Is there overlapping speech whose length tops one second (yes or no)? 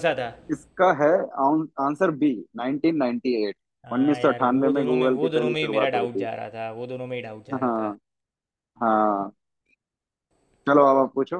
yes